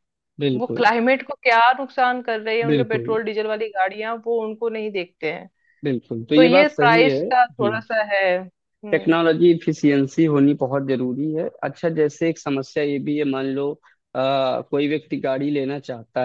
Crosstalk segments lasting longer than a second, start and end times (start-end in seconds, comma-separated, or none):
6.3-7.8